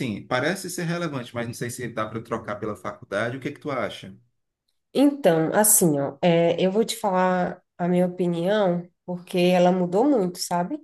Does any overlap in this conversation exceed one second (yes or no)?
no